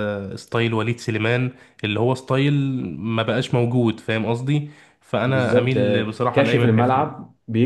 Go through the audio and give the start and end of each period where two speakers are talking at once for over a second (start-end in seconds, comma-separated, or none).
5.2-7.2